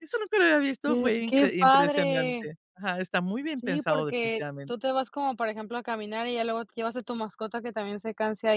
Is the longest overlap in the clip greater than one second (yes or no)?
yes